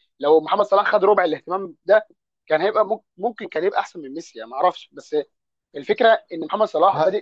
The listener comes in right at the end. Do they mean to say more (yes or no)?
no